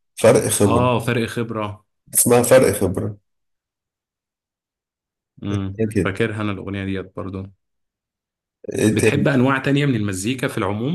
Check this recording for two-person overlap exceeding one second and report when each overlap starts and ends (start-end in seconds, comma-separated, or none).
none